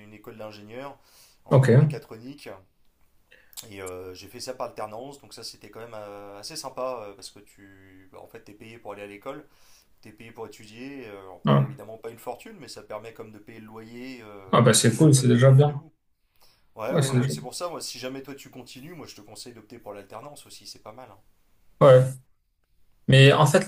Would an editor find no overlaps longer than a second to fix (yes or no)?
no